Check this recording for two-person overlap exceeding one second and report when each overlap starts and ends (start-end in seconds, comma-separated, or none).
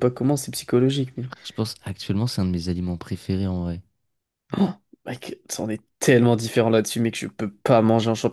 none